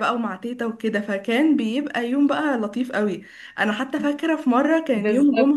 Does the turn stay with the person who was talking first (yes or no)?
yes